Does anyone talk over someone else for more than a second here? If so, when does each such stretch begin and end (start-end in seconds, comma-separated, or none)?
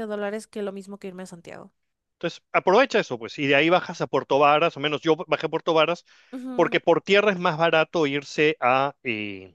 none